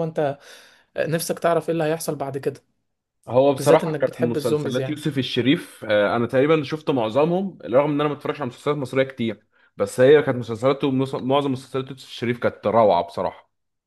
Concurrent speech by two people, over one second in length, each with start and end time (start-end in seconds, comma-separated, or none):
3.6-5.0